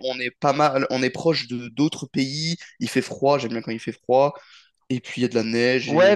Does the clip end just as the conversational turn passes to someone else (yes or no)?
yes